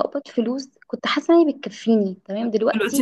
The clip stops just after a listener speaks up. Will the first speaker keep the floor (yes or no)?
yes